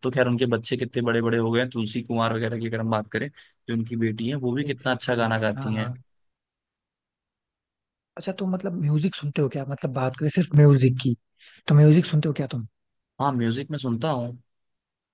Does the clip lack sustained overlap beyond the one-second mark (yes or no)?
no